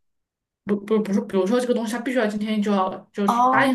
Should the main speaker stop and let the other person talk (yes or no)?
no